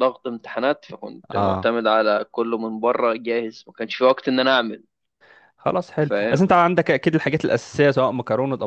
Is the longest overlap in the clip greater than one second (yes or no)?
no